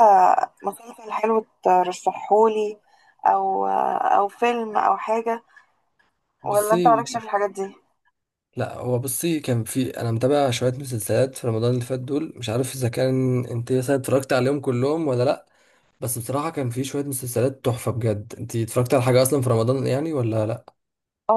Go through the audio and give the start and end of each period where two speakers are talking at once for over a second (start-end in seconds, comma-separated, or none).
none